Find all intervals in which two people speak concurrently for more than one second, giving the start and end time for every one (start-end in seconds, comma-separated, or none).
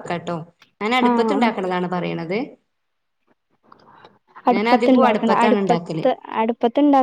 4.5-6.0